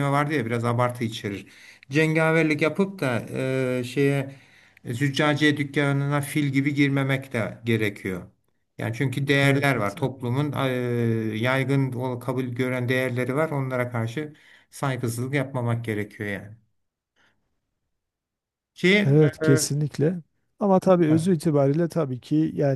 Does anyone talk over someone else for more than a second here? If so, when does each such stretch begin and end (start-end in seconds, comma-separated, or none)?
none